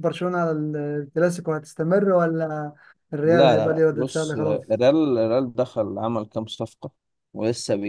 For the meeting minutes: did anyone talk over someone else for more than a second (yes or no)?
yes